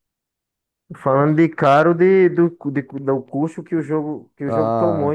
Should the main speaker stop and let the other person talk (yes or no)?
yes